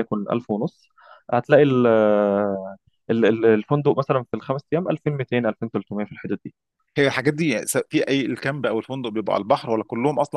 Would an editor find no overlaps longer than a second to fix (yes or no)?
yes